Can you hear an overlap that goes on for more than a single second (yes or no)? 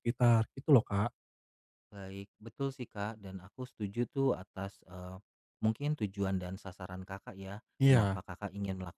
no